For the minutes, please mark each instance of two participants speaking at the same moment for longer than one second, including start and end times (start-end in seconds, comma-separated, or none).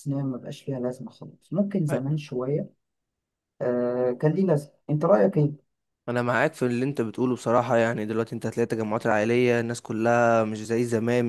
none